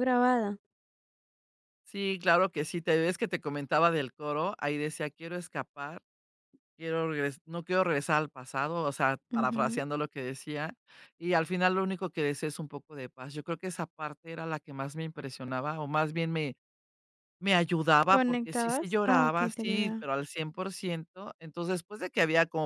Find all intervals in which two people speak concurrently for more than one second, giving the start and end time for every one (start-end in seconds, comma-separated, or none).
18.1-20.0